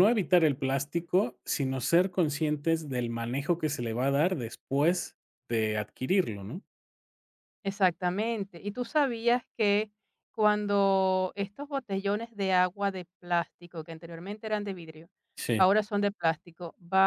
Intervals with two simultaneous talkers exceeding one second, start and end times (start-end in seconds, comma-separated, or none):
none